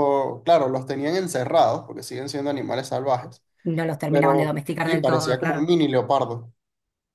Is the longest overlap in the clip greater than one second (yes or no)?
yes